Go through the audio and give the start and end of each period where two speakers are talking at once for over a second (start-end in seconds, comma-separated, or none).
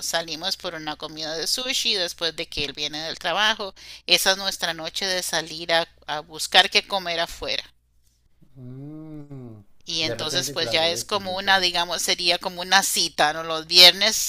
10.0-11.7